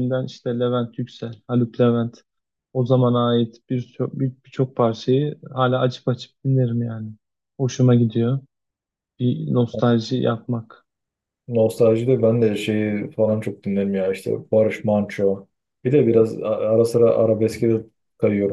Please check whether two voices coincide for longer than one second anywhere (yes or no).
no